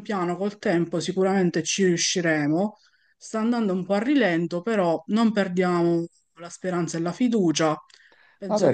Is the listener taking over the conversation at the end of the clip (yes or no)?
yes